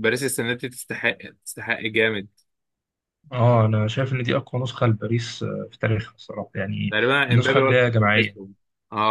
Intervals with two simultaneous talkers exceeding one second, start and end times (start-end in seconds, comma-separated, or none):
6.9-8.4